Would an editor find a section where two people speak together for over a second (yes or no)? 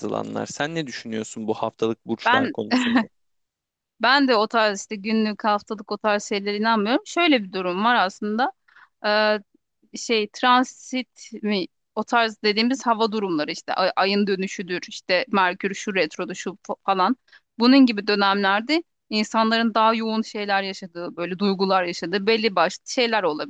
no